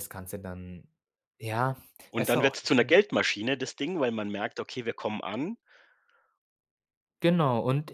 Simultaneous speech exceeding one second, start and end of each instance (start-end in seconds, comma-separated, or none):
none